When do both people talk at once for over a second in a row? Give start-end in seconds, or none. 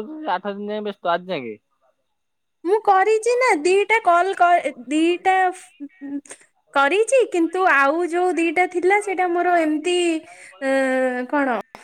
none